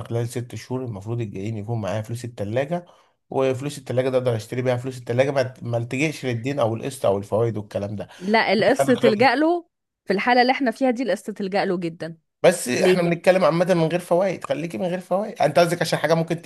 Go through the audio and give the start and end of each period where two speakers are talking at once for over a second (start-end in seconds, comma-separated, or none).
none